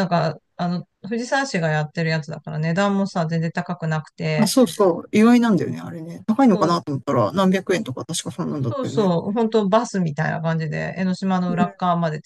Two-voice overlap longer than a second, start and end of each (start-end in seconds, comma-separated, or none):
none